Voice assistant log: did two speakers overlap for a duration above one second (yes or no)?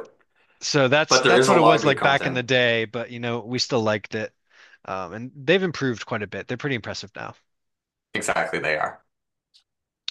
yes